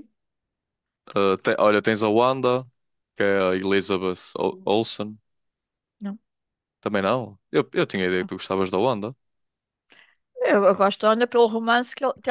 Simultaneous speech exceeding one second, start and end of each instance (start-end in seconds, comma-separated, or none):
none